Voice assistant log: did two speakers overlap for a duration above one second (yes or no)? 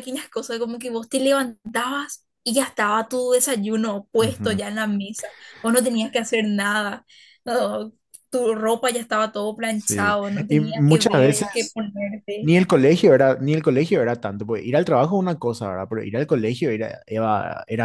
yes